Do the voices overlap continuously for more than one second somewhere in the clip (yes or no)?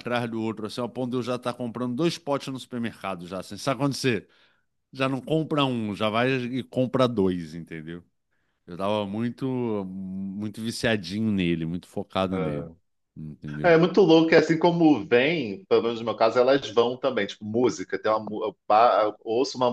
no